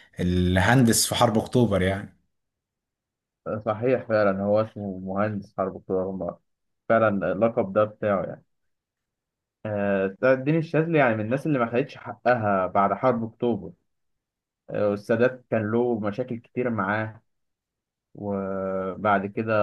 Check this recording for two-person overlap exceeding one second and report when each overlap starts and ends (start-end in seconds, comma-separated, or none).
none